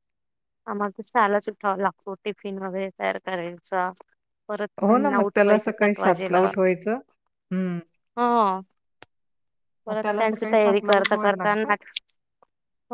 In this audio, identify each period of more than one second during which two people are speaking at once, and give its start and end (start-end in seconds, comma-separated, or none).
4.9-6.4, 9.9-11.7